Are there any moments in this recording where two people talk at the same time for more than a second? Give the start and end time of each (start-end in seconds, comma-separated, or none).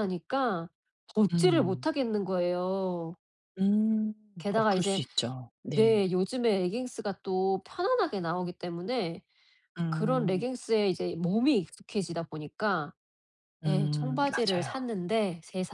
13.7-14.9